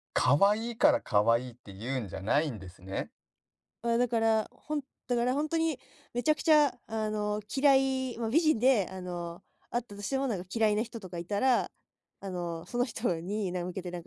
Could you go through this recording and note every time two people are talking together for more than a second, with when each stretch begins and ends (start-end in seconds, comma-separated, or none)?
none